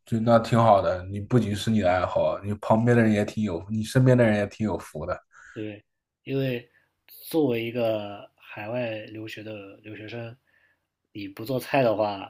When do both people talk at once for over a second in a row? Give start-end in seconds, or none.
none